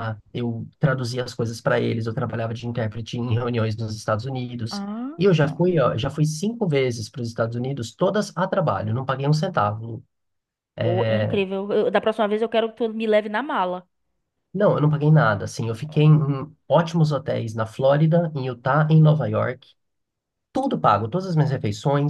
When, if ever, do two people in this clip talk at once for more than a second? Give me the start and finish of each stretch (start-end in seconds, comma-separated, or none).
none